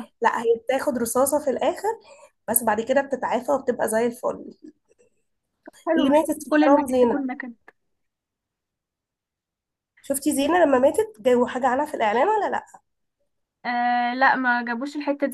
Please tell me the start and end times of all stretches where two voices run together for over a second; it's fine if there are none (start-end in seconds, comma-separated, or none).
6.0-7.2